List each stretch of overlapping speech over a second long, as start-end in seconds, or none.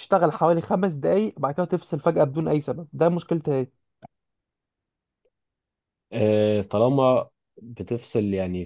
none